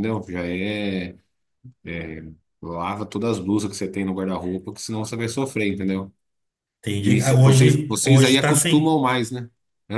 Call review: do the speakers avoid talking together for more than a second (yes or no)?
no